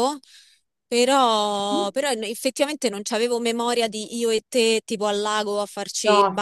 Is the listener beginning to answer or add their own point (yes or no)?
yes